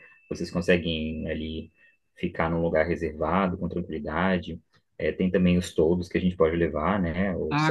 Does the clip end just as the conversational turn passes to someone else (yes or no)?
yes